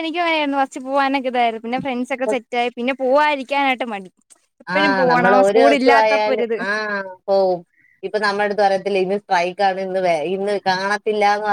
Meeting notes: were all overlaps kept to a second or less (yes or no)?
no